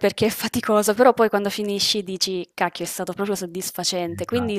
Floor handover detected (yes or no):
no